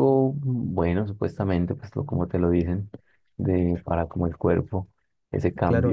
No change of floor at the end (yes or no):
no